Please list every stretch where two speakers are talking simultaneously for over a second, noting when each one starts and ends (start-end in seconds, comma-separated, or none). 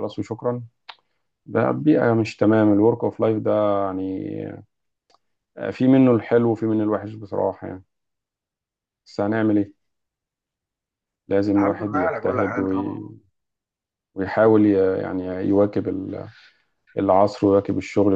11.4-13.0